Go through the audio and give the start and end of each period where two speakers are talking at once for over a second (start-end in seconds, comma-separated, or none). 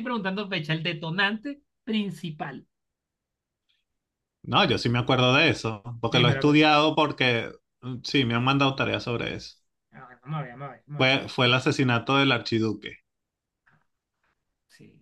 none